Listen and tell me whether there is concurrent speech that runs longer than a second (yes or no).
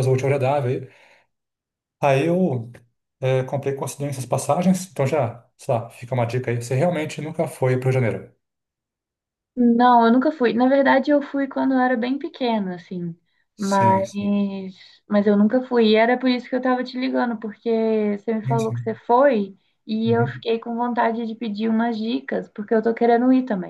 no